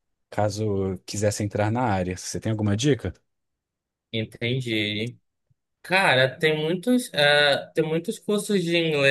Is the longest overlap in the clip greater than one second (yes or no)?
no